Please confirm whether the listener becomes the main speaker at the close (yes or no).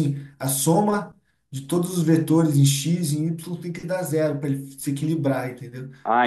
yes